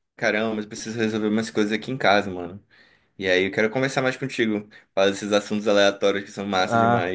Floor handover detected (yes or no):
yes